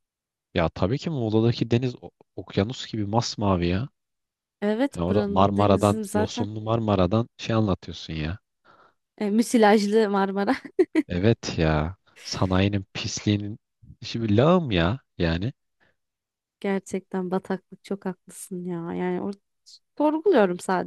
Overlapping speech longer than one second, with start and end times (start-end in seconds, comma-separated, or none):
4.9-6.5